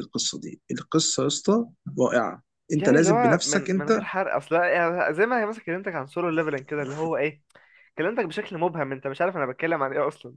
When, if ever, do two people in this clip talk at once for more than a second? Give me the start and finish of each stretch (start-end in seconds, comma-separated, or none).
2.8-4.1